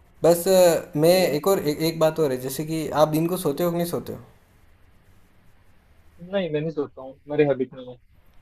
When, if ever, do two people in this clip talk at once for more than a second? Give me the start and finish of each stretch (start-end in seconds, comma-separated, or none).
none